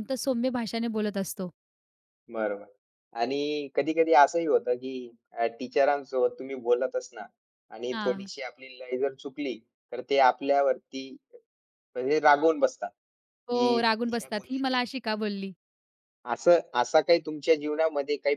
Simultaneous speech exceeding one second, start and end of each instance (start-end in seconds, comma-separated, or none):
13.5-14.7